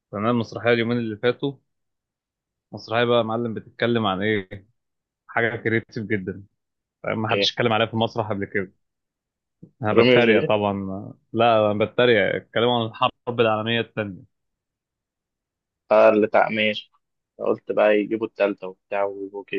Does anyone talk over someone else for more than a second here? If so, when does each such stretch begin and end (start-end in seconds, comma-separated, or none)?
none